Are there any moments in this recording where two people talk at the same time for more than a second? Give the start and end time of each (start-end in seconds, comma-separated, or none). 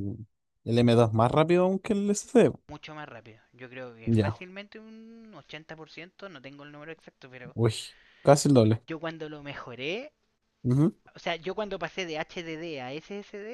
none